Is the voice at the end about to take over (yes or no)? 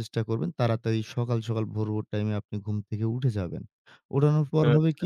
no